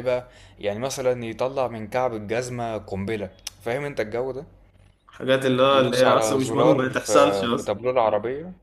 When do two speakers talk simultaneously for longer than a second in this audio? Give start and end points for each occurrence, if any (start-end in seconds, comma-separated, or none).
5.7-7.8